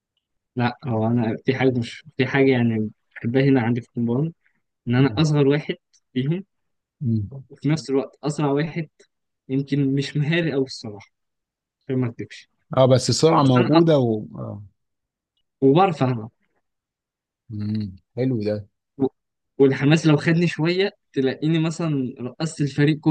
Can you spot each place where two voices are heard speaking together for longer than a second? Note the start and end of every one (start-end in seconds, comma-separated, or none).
none